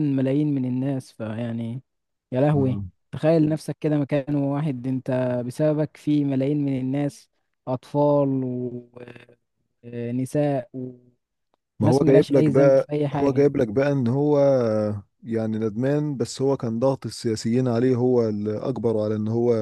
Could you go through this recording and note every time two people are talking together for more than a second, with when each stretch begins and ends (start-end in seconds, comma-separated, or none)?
11.8-13.5